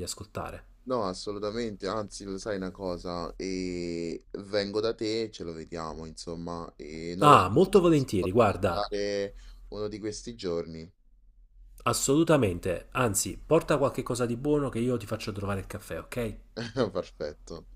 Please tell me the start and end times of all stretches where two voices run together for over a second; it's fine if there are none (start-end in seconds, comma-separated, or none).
7.2-8.9